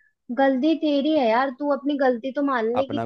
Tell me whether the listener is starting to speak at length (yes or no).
no